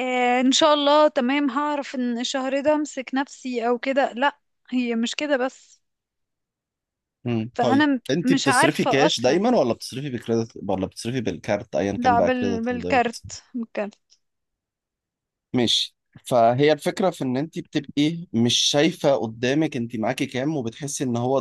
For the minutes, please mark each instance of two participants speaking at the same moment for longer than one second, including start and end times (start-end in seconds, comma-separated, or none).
7.5-9.5, 12.0-13.2